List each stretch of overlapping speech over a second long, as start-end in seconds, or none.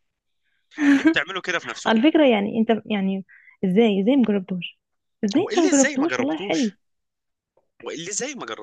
5.4-6.7